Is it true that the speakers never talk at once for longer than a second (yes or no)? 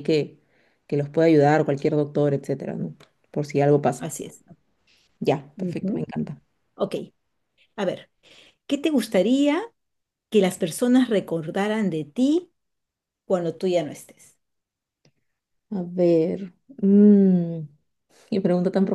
yes